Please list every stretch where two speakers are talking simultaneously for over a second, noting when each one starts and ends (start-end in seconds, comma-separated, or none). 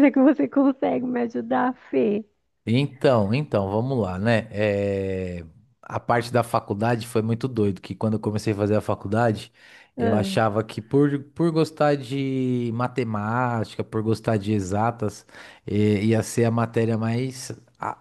none